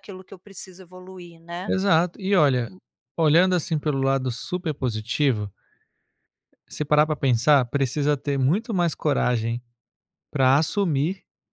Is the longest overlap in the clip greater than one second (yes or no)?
no